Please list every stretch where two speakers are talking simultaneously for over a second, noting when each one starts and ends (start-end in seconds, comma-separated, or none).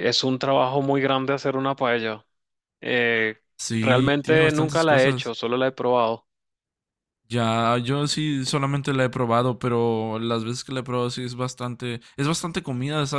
3.8-5.3